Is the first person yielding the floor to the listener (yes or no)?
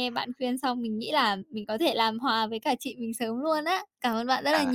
yes